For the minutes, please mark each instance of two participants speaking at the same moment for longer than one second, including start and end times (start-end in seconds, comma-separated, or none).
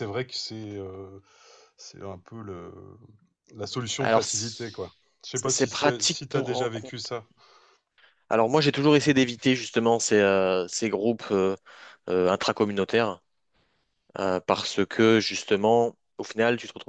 4.0-7.0